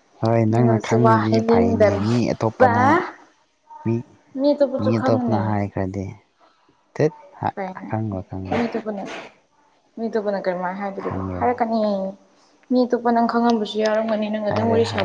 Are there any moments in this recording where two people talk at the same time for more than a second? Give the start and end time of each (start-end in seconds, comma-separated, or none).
0.5-2.8